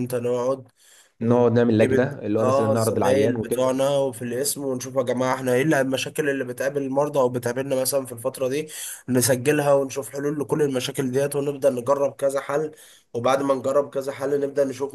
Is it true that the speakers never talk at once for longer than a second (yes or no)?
no